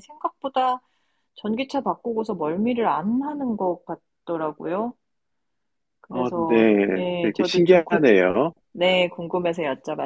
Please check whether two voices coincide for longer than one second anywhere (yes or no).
yes